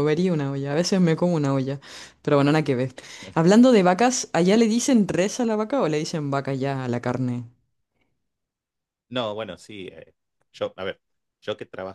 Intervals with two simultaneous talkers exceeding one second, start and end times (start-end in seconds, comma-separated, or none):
none